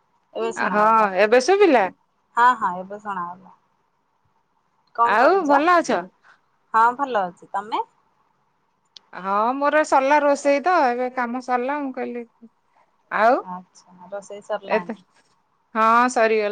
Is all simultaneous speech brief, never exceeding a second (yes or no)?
yes